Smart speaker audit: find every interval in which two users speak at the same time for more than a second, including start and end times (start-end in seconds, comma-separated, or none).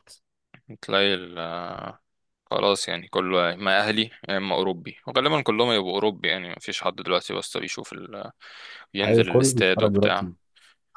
9.1-10.3